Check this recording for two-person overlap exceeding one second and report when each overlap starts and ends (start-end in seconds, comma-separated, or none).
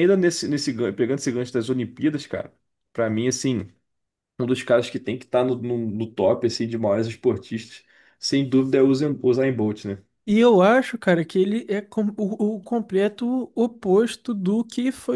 none